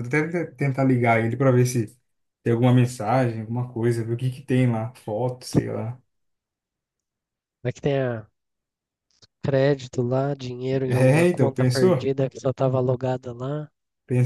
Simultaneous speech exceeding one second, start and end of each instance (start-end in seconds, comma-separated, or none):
10.9-12.1